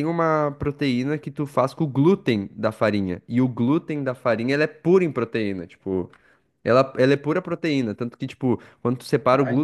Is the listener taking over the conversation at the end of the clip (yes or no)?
no